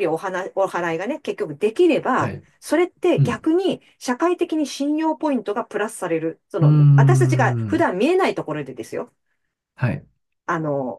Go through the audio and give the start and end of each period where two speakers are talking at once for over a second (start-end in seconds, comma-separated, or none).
6.6-7.8